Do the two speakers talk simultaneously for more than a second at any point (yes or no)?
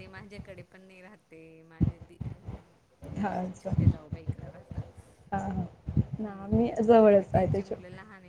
yes